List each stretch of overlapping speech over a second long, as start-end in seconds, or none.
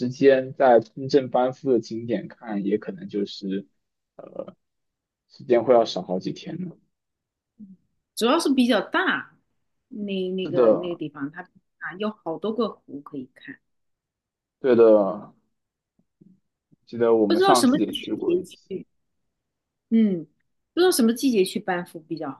17.3-18.7